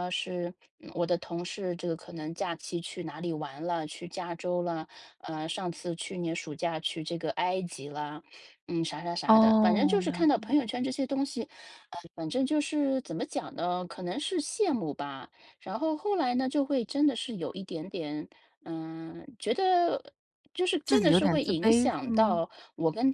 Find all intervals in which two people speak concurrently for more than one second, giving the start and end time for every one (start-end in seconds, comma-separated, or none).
9.3-10.7, 20.9-22.4